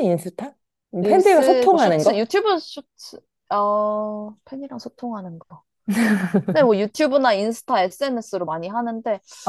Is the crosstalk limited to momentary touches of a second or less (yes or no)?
no